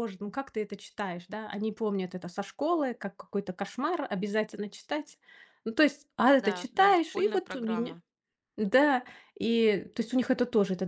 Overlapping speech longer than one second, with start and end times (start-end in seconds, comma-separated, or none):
6.4-8.0